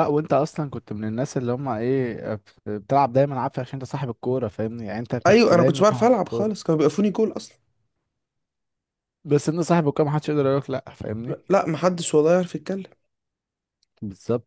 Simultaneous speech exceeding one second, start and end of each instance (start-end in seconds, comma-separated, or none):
5.3-6.7